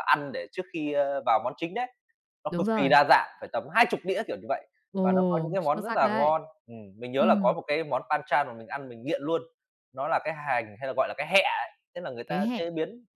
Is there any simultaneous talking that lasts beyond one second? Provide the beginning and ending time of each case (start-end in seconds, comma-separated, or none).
4.9-6.3